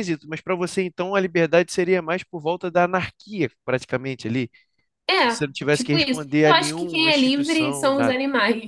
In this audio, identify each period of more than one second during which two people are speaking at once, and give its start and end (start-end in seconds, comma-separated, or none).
5.2-8.2